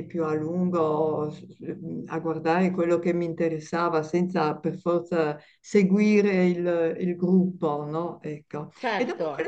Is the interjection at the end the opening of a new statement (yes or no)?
no